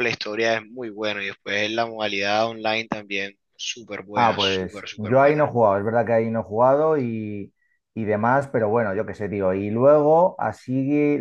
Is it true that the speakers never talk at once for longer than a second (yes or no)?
no